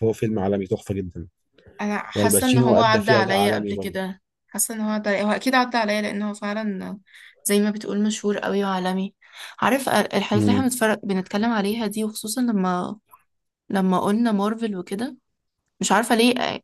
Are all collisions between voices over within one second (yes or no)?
no